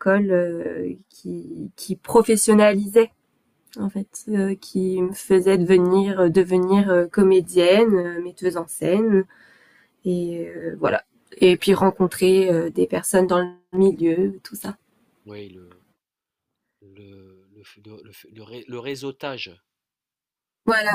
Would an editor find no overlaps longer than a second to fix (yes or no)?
yes